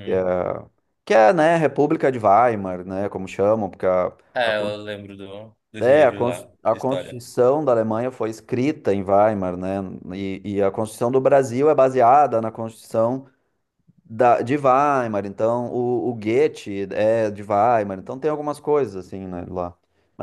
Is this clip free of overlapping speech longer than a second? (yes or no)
no